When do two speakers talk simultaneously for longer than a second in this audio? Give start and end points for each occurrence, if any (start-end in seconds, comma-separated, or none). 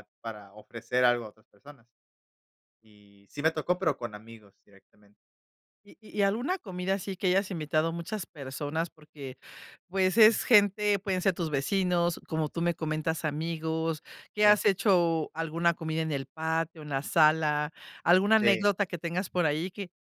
none